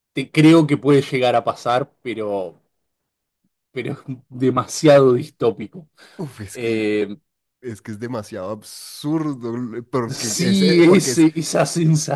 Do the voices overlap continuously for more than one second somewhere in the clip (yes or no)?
yes